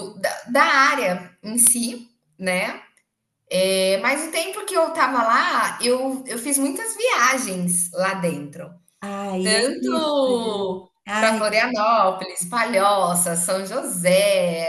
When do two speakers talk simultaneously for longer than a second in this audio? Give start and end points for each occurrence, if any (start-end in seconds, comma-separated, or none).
9.4-11.4